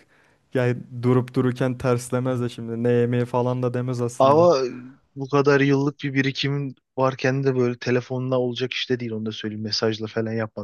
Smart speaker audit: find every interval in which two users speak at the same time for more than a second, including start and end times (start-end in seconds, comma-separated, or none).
none